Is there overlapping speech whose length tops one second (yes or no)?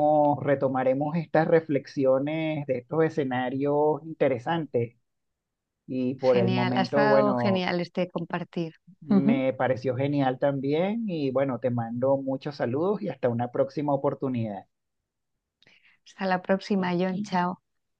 yes